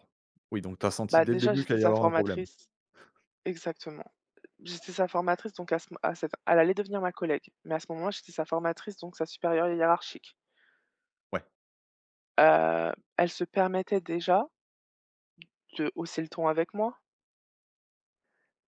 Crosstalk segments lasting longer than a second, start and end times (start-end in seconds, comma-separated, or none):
1.1-2.5